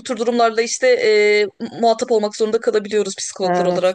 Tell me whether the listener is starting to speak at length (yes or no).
yes